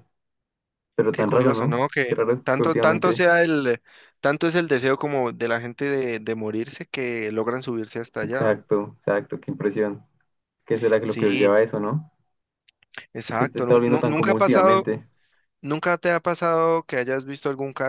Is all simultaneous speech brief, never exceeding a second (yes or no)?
no